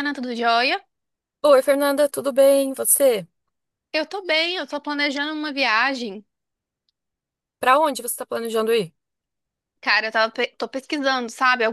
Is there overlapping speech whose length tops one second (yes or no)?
no